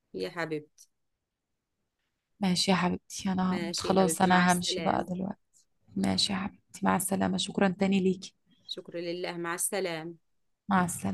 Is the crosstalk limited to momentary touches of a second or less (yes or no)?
no